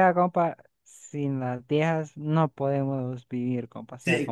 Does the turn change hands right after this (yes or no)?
yes